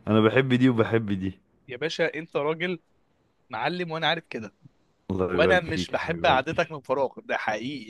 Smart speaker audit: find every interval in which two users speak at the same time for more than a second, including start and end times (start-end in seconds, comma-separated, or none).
5.3-6.8